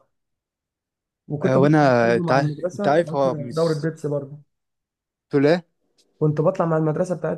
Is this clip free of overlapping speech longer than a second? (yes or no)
no